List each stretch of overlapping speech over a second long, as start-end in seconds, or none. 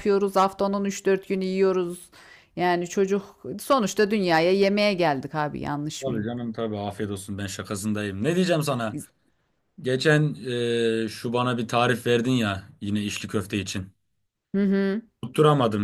none